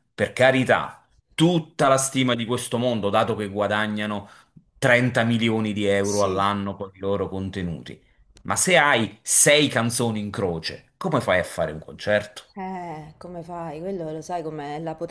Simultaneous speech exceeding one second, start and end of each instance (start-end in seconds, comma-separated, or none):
none